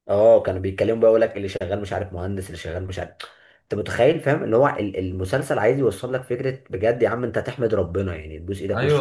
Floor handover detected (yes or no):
yes